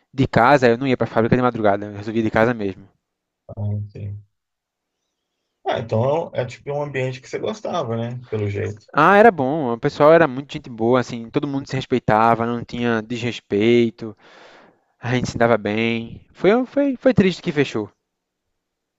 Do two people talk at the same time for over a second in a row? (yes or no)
no